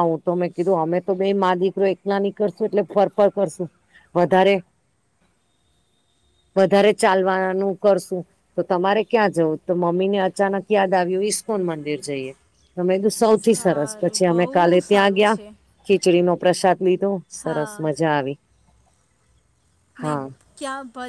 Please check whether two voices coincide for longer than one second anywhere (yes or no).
yes